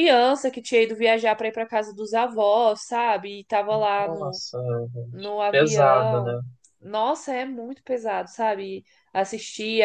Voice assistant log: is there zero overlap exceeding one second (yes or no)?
no